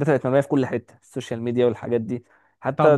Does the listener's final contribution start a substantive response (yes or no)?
yes